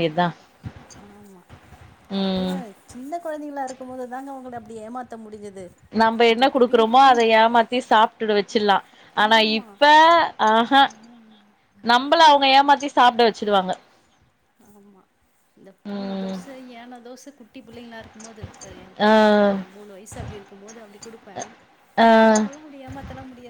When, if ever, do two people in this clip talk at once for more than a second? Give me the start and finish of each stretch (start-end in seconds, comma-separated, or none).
none